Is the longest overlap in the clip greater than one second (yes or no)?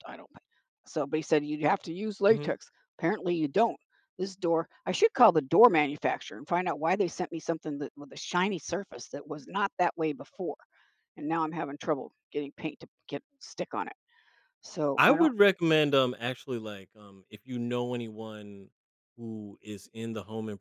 no